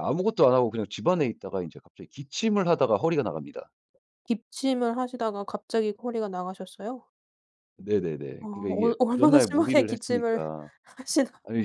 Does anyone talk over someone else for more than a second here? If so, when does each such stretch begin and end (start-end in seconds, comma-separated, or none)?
8.4-10.4